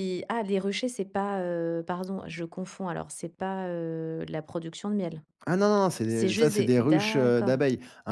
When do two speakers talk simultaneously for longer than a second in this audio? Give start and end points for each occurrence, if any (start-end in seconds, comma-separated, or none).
6.1-7.5